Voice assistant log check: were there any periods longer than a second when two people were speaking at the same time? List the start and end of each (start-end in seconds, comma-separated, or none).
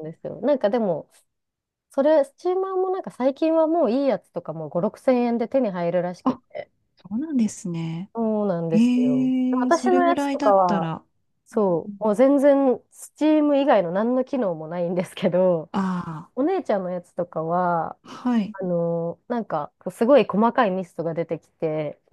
8.7-10.9